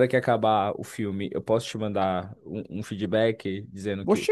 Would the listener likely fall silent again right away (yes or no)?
no